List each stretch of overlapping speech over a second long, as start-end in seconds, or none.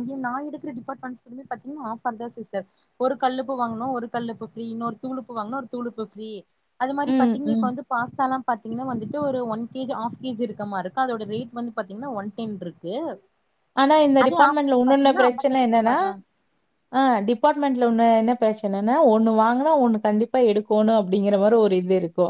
14.2-15.9